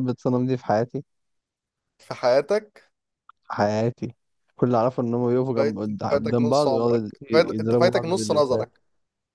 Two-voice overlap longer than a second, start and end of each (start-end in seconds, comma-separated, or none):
5.6-8.7